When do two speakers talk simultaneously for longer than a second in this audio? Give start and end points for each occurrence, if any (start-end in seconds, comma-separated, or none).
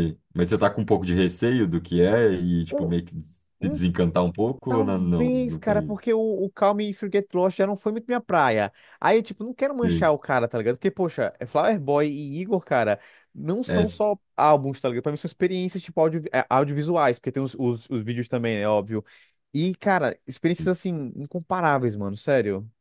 4.7-6.0